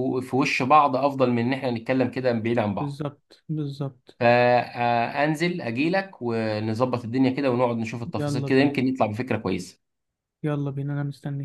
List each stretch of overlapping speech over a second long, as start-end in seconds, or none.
none